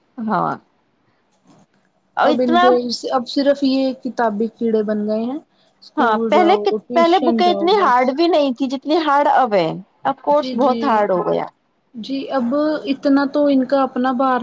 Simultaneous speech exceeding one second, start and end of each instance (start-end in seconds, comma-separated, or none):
6.0-8.1